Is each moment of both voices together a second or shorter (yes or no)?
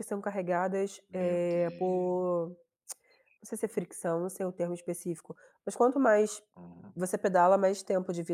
no